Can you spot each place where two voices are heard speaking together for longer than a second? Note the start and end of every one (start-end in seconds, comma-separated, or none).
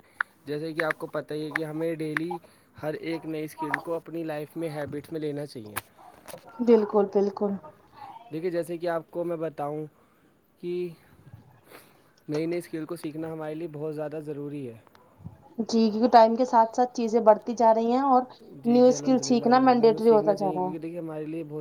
18.7-20.9